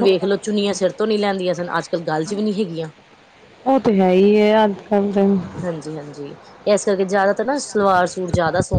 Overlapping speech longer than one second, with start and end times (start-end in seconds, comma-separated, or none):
none